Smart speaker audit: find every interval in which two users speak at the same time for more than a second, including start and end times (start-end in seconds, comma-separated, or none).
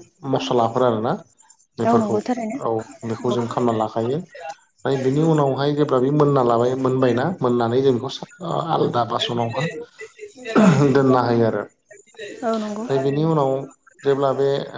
none